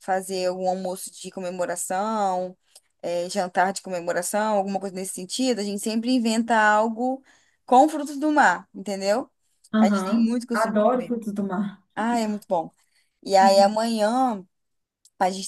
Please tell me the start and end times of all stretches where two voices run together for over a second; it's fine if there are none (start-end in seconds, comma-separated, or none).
9.8-11.2